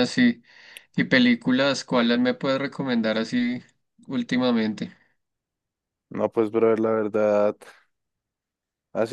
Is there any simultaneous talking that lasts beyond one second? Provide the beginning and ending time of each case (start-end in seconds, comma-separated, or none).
none